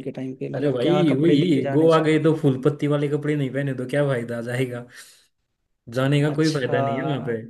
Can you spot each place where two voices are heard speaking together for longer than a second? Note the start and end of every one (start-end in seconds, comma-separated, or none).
0.6-2.1